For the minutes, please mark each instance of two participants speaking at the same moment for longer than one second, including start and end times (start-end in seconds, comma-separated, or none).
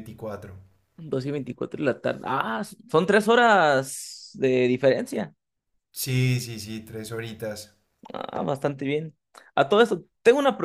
none